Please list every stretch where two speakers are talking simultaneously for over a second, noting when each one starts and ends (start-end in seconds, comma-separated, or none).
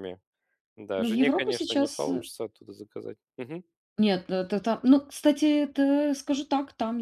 1.0-2.2